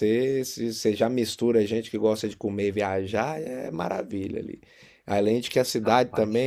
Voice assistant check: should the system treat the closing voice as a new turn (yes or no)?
no